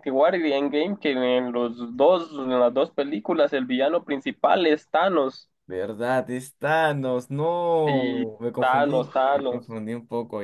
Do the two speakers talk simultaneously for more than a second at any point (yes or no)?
yes